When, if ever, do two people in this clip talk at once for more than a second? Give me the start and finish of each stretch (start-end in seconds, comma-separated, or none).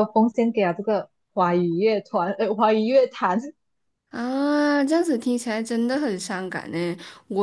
none